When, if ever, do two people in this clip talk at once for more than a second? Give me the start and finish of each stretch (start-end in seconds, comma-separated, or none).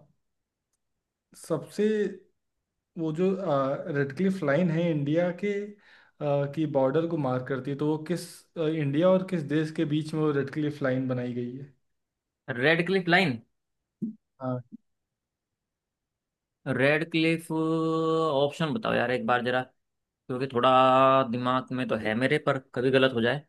none